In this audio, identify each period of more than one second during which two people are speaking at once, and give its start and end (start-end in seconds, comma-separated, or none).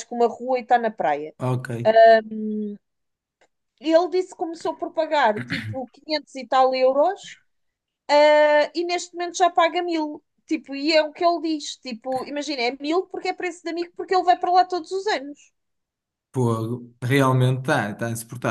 none